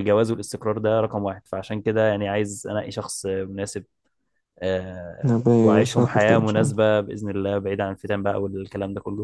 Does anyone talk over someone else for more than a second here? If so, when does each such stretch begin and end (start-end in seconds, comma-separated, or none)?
5.2-6.8